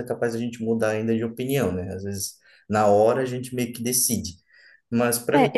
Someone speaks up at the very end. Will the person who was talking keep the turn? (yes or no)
no